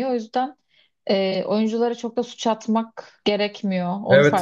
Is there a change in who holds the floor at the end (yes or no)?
yes